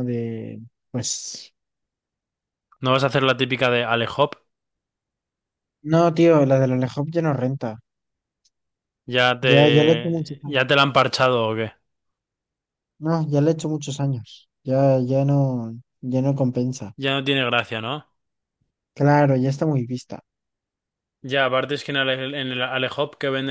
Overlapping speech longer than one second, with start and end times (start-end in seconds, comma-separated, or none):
9.4-10.6